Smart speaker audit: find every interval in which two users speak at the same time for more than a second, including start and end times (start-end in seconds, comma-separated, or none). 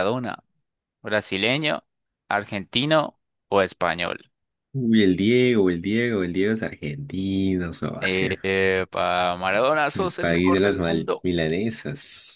9.9-11.2